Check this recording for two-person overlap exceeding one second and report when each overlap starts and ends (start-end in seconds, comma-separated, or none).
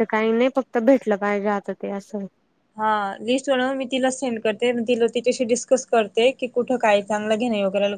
none